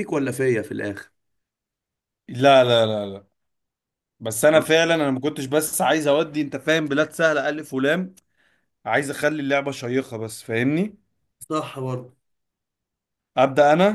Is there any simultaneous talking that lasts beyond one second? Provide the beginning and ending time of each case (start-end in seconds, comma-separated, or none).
none